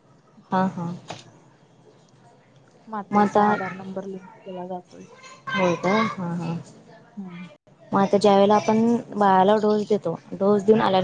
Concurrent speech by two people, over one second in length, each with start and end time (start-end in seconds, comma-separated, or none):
none